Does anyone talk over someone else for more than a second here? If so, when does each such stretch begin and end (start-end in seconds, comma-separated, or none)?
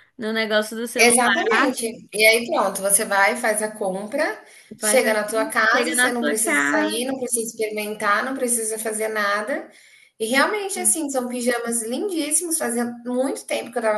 4.8-7.0